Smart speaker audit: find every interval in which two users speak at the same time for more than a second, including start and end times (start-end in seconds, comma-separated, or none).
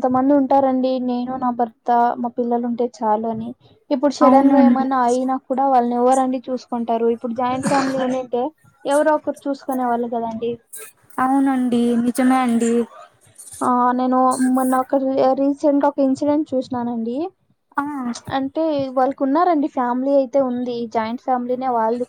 none